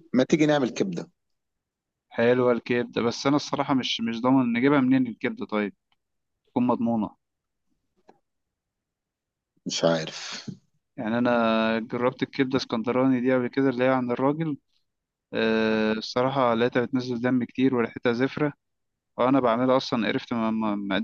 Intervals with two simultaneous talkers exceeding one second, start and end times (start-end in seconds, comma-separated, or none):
none